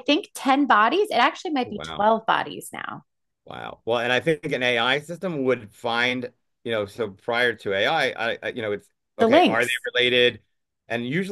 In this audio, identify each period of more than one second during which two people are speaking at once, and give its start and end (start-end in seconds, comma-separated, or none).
none